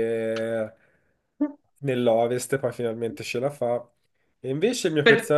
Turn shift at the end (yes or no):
no